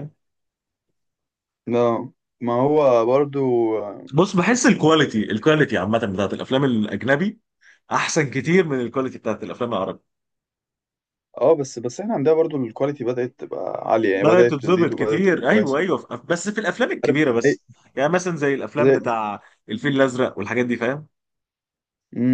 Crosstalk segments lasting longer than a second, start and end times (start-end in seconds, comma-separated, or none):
14.1-15.8